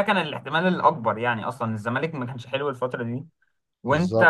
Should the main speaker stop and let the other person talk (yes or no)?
no